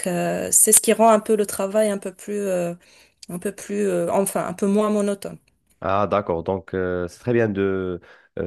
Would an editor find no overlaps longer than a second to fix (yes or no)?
yes